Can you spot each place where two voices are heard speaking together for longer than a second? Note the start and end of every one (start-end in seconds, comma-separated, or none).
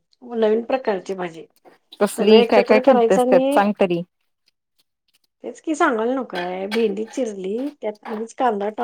2.2-3.6